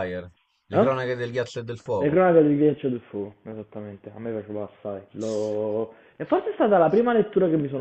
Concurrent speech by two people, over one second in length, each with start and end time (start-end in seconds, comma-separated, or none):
none